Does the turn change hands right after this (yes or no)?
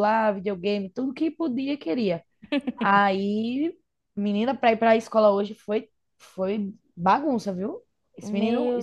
yes